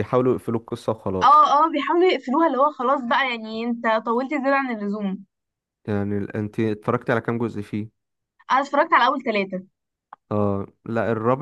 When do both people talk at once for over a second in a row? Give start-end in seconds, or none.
none